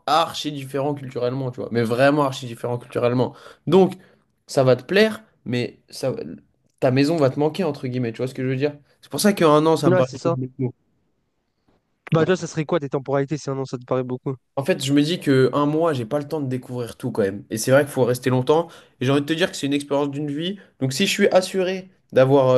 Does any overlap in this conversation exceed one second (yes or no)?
no